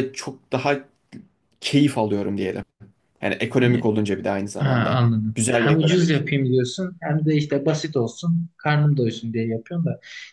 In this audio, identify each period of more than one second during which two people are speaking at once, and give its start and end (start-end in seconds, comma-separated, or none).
4.6-6.2